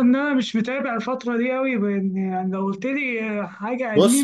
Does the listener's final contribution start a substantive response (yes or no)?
yes